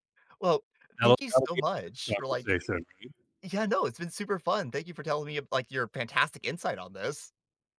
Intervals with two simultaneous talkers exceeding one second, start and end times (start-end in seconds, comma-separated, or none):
1.0-2.5